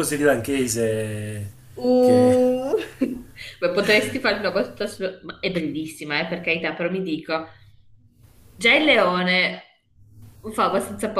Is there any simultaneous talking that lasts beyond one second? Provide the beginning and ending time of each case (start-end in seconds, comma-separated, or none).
none